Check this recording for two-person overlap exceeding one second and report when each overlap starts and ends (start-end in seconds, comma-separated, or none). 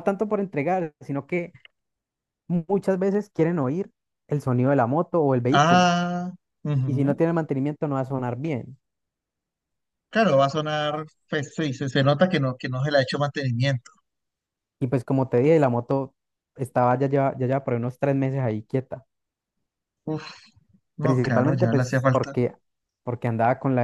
21.0-22.4